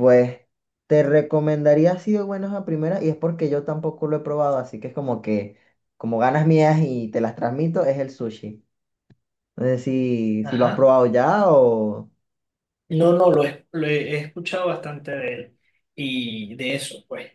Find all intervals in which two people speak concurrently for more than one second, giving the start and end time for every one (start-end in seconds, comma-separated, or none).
none